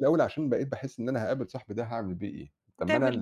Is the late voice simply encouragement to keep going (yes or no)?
yes